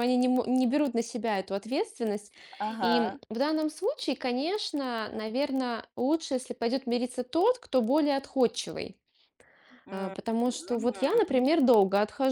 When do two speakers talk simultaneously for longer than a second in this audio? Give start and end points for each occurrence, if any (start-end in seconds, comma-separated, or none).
9.9-11.5